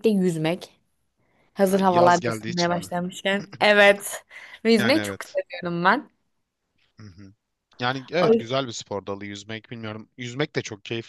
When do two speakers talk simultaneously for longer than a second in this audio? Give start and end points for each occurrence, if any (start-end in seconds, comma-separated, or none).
1.7-2.9